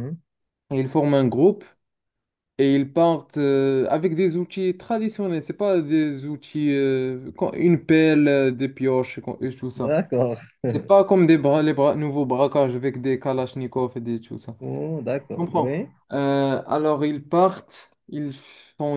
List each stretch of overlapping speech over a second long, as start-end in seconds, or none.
none